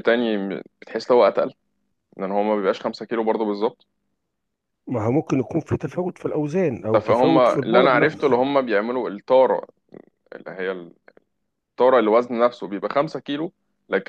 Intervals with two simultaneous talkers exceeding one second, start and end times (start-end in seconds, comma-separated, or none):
6.9-8.4